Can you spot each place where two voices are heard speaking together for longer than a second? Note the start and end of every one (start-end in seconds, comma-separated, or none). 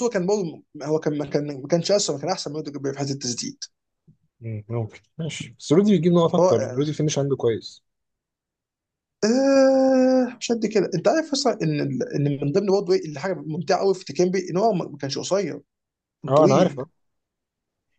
none